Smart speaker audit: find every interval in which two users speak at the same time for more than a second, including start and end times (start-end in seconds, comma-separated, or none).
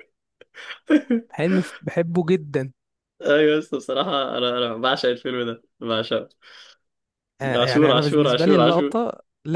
7.6-8.9